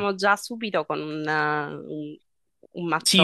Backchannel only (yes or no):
no